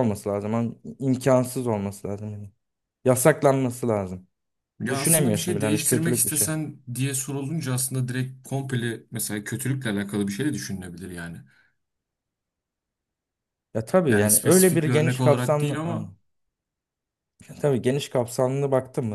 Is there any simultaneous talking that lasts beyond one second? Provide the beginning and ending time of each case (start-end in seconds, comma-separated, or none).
4.9-6.5, 14.1-16.1